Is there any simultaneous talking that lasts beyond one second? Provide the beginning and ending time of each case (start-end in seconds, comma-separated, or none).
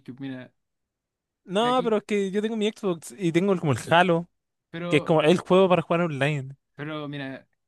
none